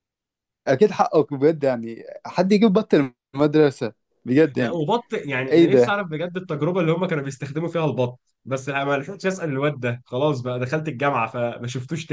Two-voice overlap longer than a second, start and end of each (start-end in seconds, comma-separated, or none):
none